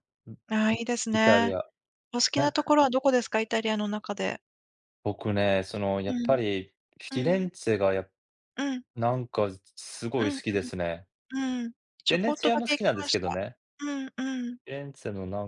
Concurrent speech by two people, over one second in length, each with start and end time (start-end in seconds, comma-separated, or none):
12.1-13.4